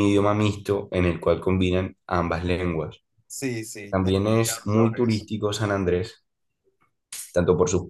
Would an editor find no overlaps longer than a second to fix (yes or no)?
no